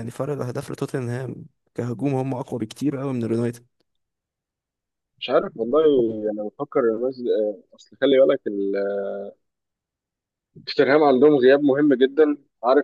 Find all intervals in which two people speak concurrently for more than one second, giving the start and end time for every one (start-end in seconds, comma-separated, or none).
none